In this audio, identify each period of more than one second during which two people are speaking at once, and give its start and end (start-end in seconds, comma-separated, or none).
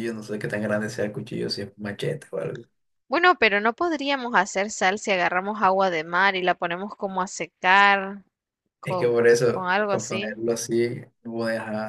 8.8-10.4